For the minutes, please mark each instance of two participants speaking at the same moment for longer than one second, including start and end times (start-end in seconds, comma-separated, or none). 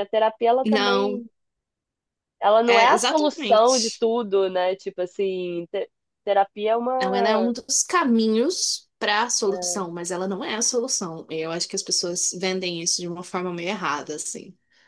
2.7-4.0